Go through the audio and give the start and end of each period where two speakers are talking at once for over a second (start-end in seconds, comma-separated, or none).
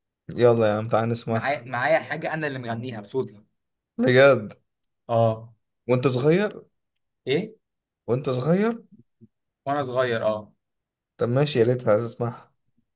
none